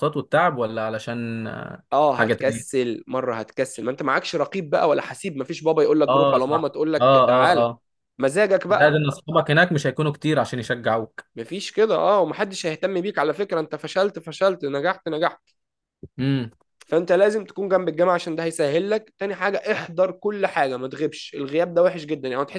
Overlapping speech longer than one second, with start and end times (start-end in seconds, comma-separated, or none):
6.1-7.7